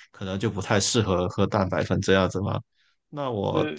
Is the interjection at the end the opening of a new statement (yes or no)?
no